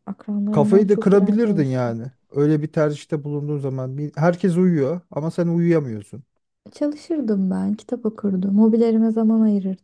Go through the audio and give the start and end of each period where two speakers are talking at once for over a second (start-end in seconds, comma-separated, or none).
0.5-2.0